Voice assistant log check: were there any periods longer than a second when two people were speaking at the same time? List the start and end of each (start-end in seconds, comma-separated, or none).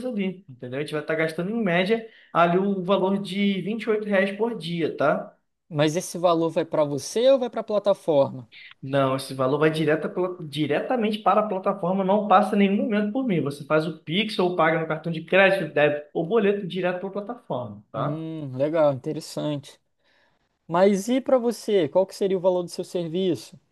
none